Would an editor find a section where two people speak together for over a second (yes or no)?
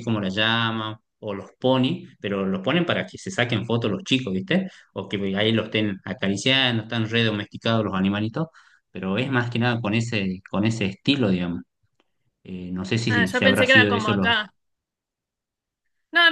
yes